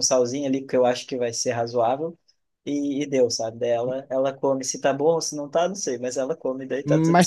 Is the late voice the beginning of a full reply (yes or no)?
yes